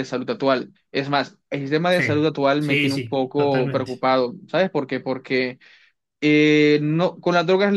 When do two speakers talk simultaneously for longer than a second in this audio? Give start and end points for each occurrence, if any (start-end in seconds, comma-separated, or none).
1.9-4.0